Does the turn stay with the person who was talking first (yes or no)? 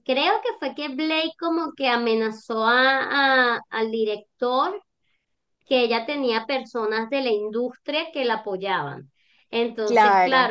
yes